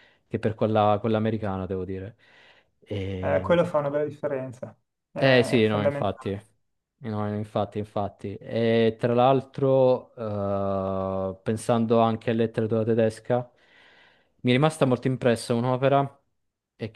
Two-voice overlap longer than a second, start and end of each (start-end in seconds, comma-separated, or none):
5.2-6.4